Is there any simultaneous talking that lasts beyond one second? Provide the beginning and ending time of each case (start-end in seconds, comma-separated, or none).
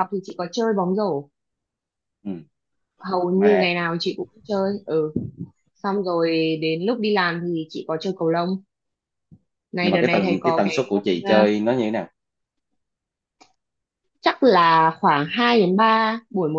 9.8-11.4